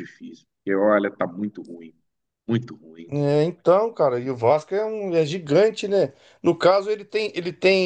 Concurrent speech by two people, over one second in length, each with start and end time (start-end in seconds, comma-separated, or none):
none